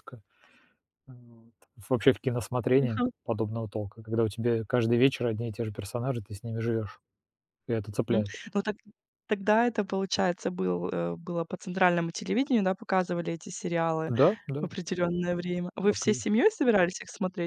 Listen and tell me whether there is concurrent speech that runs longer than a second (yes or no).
no